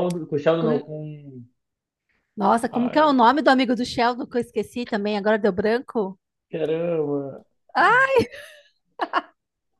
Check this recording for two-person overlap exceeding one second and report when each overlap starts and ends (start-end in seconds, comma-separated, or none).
none